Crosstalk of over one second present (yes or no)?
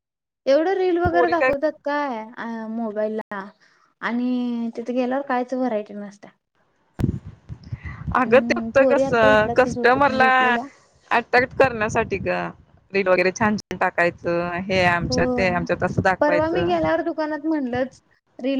yes